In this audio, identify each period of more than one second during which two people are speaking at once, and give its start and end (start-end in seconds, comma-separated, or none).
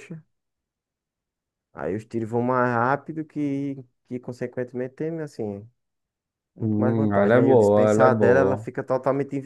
6.6-8.7